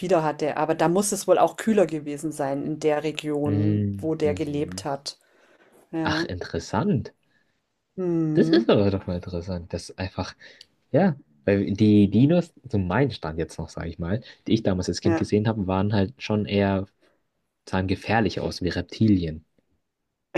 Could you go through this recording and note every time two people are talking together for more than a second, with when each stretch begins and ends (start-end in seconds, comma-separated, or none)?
3.5-4.8